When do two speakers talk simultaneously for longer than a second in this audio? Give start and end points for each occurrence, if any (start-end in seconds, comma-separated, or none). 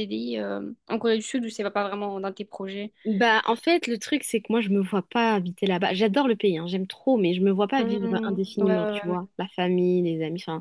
7.8-9.2